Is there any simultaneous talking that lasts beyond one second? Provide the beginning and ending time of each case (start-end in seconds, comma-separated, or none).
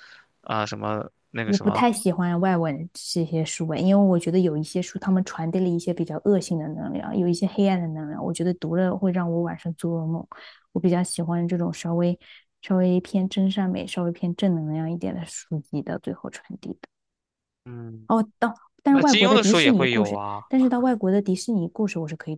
18.9-20.4